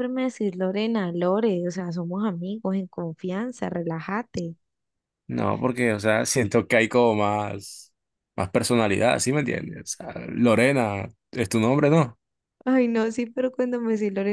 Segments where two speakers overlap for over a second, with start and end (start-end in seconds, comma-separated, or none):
none